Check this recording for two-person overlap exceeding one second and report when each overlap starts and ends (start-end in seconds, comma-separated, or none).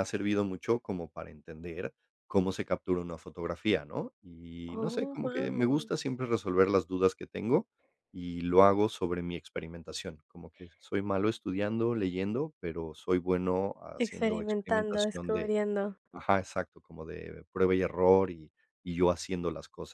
4.7-5.9, 14.0-15.5